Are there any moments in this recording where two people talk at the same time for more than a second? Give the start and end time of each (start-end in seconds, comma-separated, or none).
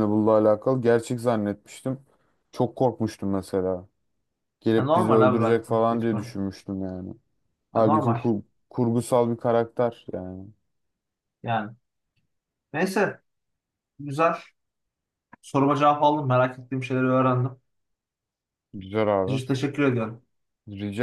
4.8-6.4